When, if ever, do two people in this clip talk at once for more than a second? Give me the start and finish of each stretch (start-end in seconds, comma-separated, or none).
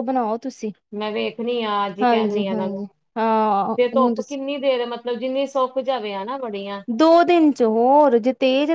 none